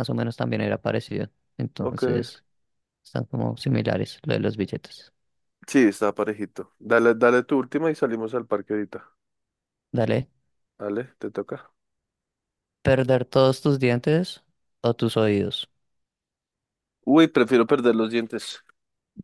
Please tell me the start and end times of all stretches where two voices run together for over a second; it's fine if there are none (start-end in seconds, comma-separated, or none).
none